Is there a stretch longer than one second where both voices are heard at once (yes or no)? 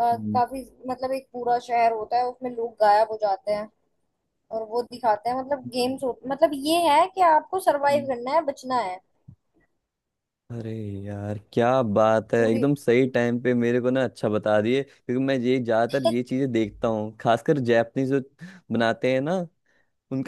no